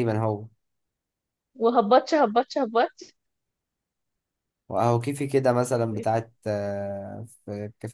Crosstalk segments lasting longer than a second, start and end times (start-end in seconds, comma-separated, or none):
none